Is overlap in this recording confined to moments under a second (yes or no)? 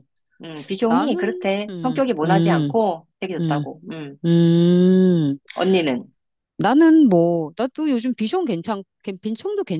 no